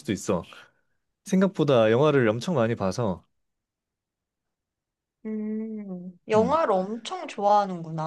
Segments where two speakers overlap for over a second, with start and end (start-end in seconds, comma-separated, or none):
none